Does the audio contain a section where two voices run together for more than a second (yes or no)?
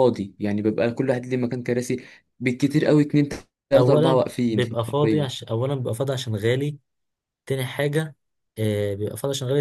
yes